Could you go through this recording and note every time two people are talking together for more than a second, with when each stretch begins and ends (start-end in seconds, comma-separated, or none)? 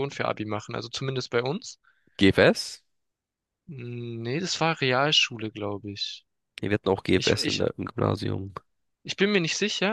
none